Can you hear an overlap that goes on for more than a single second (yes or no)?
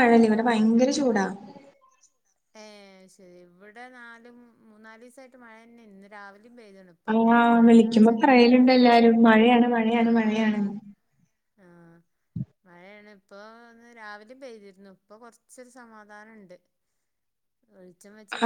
yes